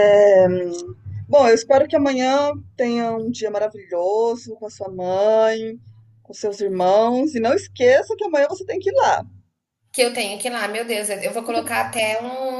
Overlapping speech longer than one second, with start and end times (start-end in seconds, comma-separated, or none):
none